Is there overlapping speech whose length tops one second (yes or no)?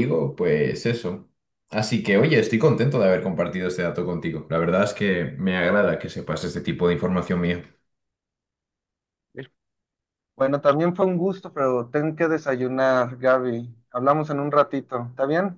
no